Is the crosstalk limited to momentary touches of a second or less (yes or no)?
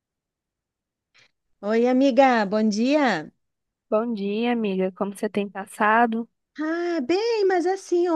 yes